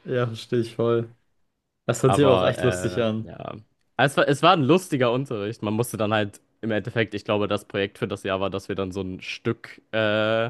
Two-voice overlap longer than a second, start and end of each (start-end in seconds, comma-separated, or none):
2.1-3.3